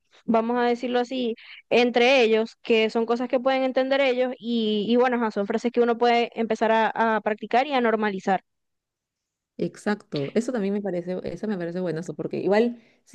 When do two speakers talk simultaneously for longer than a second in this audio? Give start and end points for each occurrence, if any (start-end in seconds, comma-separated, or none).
none